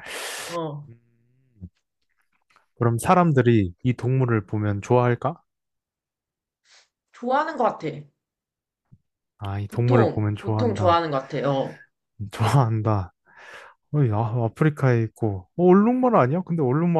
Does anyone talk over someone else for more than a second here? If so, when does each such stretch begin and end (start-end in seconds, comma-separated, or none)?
9.7-11.0